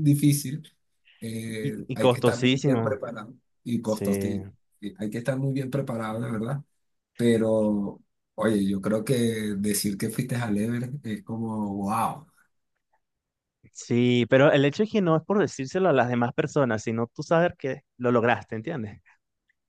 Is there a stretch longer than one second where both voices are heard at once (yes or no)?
yes